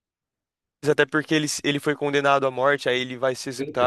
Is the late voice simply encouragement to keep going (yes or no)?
yes